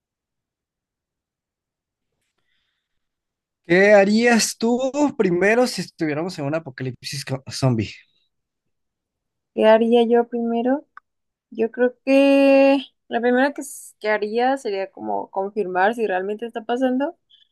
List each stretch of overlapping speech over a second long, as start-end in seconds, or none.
none